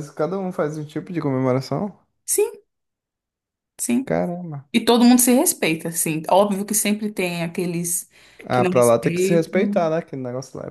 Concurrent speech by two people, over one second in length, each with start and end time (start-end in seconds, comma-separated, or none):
8.5-9.9